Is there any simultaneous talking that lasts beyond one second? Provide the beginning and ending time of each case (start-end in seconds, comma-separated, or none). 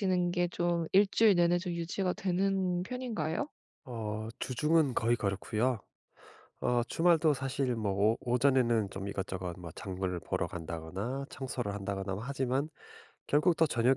none